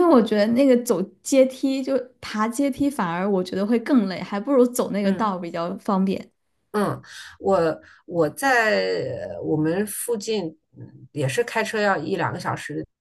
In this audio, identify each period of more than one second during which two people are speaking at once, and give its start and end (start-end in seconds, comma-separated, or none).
none